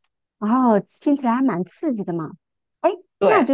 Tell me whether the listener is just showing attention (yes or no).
yes